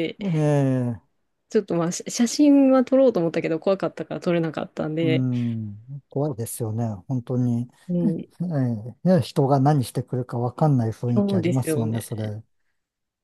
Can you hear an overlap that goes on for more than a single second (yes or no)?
yes